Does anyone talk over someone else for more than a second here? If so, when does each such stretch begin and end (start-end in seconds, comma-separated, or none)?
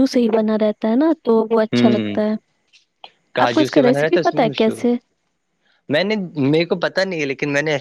3.5-4.8